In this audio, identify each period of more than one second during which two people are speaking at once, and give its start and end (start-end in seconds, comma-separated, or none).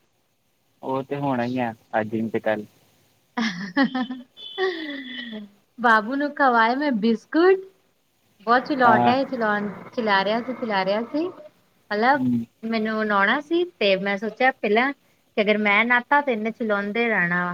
none